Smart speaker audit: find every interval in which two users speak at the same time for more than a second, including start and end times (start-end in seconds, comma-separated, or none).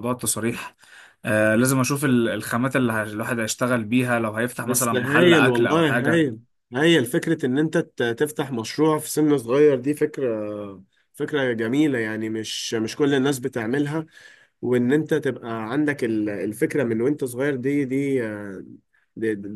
4.7-6.2